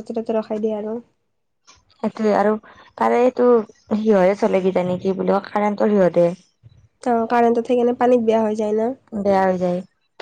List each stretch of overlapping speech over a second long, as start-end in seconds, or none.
none